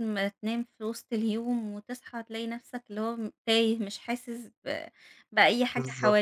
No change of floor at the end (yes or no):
no